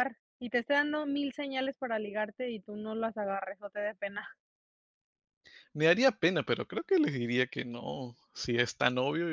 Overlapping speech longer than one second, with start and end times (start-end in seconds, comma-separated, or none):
none